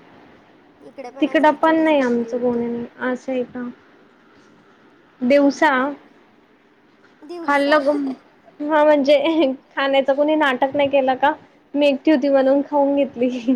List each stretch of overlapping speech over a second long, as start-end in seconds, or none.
1.2-2.6